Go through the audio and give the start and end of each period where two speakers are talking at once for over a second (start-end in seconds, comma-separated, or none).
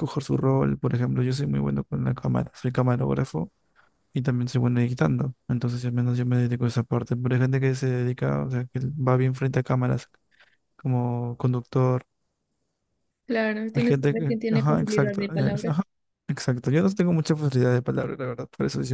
13.7-15.7